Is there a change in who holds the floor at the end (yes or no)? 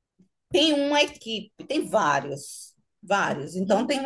no